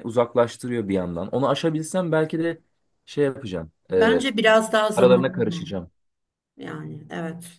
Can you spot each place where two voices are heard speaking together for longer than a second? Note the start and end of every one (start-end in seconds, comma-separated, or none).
none